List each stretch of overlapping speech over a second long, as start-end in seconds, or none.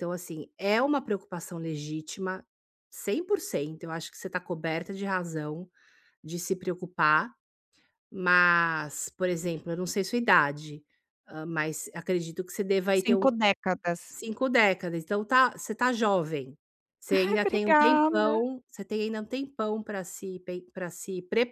17.1-18.5